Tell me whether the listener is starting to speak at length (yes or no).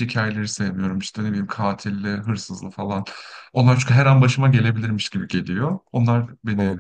yes